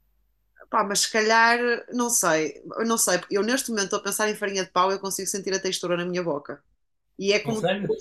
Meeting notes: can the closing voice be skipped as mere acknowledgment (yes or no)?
yes